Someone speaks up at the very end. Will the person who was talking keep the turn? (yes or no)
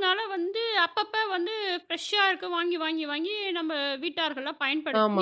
no